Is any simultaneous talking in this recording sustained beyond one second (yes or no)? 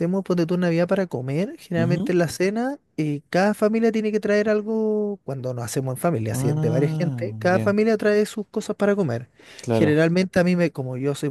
yes